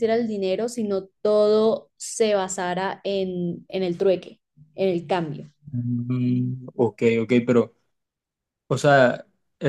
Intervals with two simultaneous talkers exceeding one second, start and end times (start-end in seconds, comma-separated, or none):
none